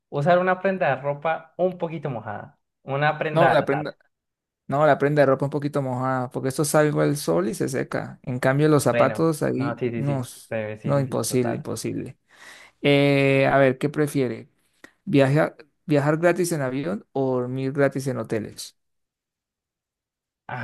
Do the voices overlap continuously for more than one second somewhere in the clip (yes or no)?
yes